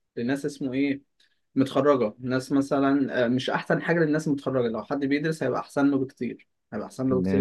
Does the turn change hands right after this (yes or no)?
yes